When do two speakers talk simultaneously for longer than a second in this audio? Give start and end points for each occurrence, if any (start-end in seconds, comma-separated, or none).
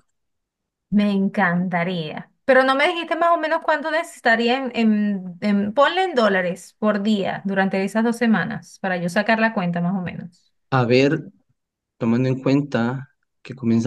none